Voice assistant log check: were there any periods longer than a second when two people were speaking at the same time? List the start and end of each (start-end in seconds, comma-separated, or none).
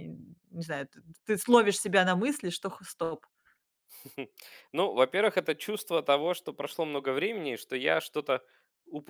none